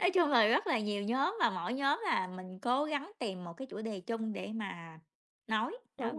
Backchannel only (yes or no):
no